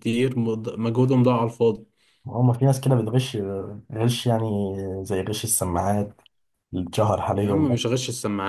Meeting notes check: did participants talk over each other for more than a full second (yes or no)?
no